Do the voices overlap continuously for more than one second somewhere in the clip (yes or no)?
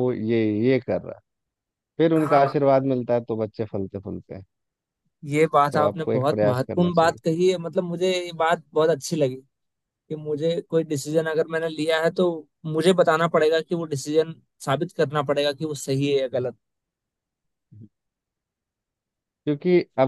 yes